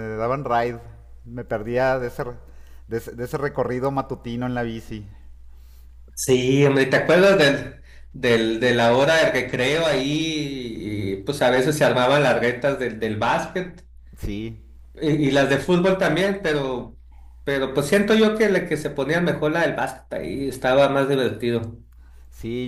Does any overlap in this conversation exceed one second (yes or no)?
no